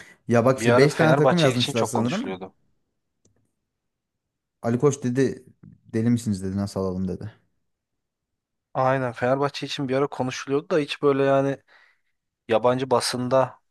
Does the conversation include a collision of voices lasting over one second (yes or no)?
yes